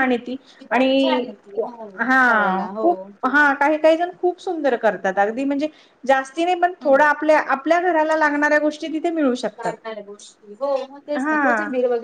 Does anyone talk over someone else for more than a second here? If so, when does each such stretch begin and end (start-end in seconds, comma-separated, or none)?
none